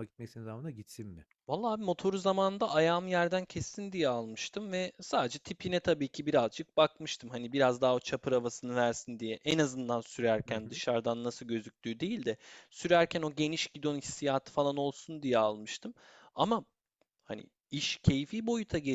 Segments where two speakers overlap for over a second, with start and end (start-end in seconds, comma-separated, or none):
none